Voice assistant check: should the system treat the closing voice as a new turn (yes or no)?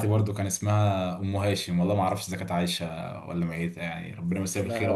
yes